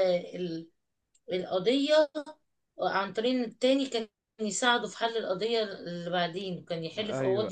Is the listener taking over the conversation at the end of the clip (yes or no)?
yes